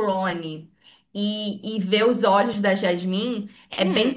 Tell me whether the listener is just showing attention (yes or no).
yes